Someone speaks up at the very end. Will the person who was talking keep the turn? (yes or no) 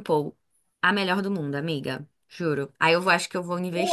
no